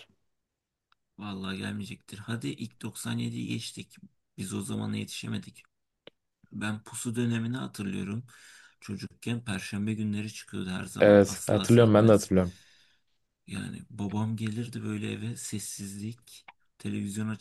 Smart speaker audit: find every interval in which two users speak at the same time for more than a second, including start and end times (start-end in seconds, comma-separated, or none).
11.0-12.3